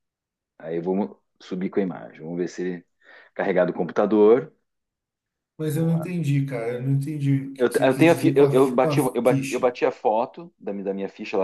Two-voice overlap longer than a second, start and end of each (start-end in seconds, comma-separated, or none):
7.6-9.7